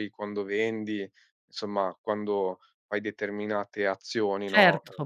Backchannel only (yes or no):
no